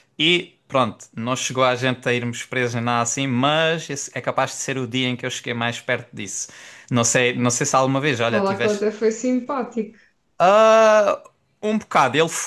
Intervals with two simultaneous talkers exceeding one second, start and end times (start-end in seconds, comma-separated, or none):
none